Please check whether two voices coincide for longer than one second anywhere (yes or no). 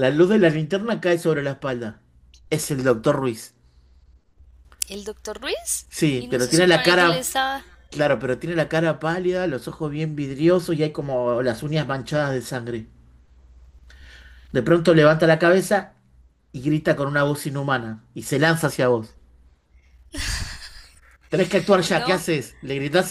yes